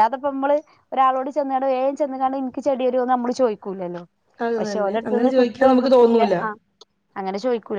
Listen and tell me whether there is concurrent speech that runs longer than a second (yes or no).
yes